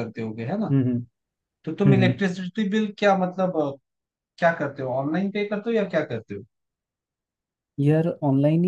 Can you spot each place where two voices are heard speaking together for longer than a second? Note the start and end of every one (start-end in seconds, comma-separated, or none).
none